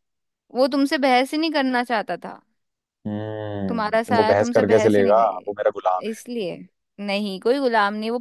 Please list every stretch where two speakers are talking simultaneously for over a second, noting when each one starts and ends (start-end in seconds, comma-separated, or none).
3.7-6.2